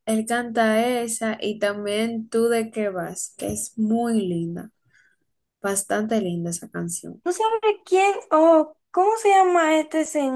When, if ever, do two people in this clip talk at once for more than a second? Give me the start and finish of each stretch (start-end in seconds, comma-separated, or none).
none